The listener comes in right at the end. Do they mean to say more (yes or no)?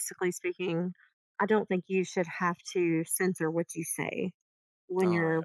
yes